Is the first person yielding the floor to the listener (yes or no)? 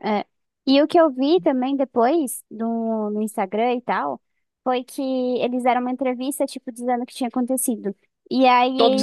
no